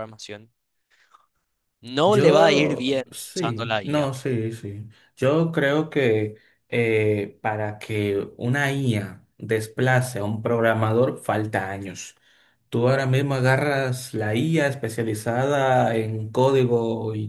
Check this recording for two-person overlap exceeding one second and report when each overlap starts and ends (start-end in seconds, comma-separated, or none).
2.0-4.1